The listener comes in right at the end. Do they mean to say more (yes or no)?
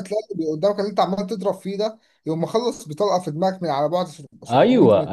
yes